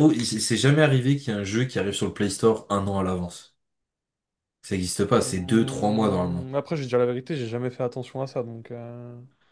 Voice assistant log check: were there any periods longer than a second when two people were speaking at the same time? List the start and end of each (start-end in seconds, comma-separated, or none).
5.2-6.5